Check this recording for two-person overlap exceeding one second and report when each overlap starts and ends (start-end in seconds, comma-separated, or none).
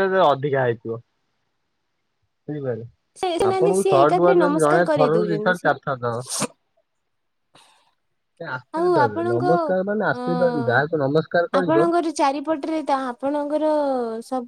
3.5-5.7